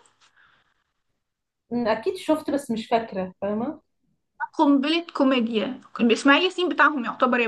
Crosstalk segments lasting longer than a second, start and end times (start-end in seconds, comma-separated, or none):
none